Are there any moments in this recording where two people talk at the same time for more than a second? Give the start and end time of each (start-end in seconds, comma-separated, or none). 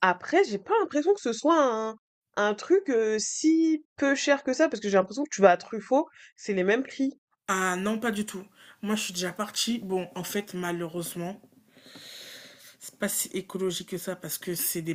none